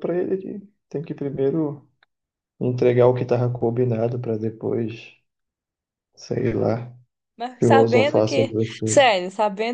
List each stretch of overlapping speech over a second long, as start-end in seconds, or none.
7.6-9.1